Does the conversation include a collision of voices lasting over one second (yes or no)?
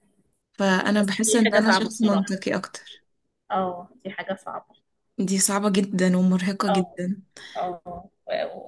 yes